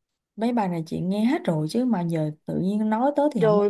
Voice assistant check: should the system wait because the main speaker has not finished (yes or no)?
no